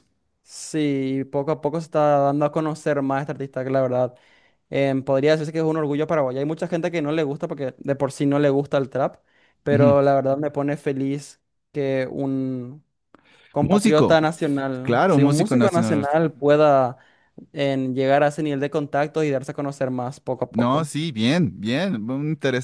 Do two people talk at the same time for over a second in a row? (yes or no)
yes